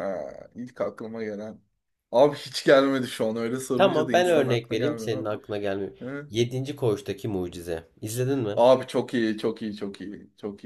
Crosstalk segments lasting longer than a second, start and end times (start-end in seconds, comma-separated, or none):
3.7-5.3